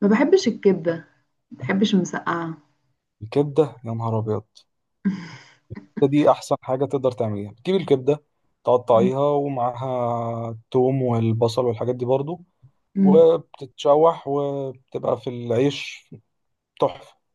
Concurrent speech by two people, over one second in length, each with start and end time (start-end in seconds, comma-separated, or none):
none